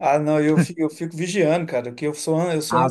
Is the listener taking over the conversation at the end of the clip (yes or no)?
no